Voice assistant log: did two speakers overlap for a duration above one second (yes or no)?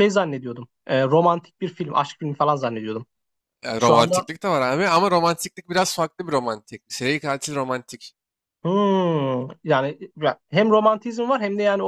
no